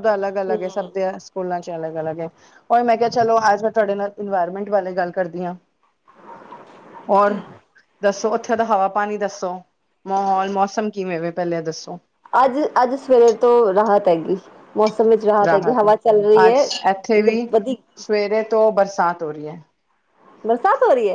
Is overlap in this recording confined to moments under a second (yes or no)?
yes